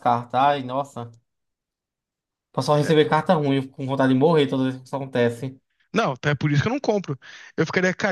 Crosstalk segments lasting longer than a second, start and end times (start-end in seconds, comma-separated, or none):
none